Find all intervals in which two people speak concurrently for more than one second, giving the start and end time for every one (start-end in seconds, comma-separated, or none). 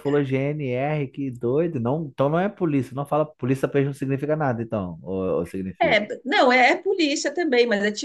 none